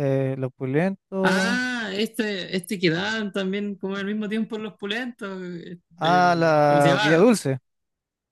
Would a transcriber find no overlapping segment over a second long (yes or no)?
no